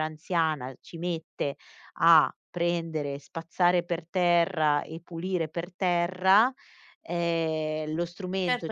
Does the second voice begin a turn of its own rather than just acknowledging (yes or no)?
yes